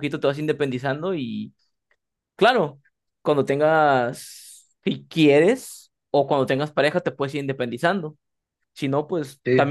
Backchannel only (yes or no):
yes